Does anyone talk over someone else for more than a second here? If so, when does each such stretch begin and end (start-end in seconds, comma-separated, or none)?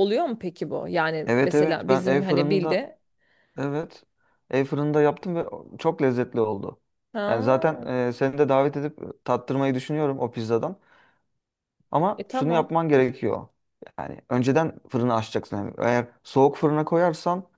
1.3-2.9